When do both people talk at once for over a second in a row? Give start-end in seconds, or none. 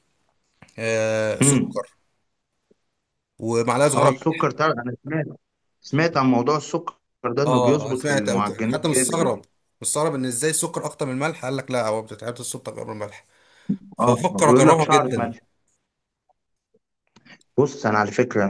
7.5-9.3, 14.0-15.3